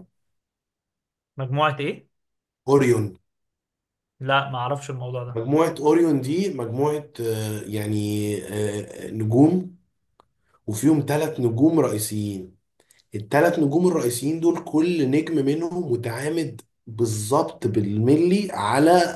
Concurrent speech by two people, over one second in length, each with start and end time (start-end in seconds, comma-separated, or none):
none